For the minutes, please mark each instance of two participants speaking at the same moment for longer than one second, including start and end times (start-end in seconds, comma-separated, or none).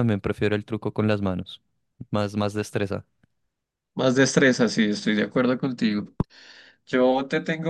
none